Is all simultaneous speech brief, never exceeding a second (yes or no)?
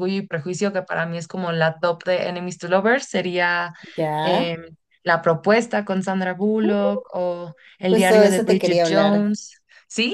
no